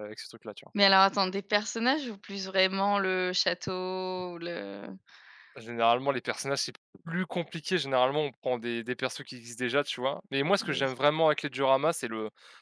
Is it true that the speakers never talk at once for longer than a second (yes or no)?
yes